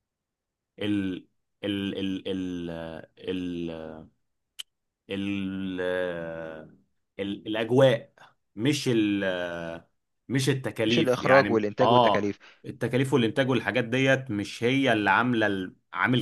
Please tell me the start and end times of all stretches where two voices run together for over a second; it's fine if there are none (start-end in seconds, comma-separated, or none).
10.9-12.3